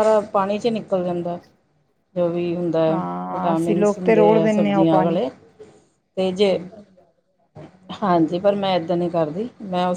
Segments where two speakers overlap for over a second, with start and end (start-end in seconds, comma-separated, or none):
3.3-5.2